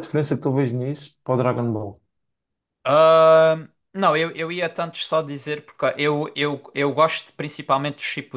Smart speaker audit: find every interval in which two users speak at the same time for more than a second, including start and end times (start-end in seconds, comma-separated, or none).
none